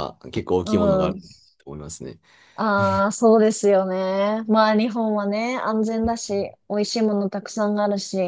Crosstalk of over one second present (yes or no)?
no